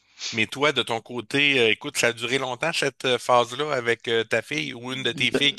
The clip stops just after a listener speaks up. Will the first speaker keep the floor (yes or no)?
yes